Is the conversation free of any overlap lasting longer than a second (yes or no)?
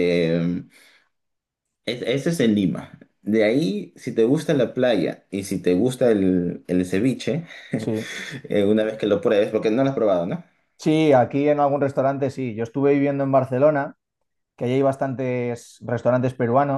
yes